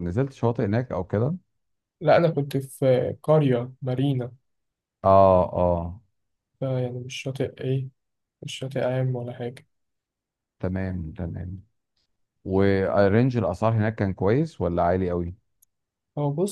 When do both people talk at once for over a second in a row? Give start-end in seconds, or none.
none